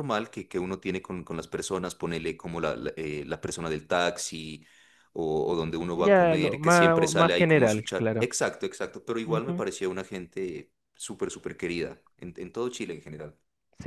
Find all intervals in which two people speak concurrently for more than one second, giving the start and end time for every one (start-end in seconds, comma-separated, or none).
5.9-8.3